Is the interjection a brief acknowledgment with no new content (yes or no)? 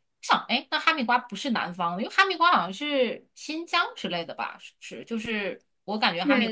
no